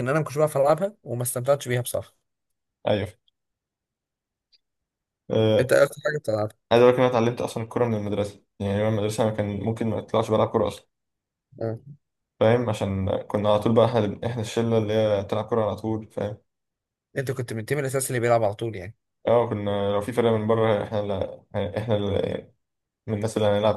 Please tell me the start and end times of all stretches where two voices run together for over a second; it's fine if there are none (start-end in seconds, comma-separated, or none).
none